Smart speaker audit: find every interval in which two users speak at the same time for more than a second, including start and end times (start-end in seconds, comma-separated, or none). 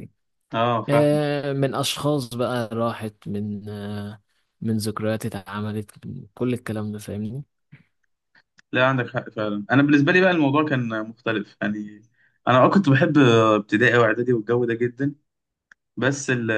none